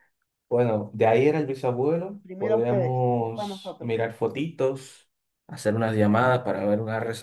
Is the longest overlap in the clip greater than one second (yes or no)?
yes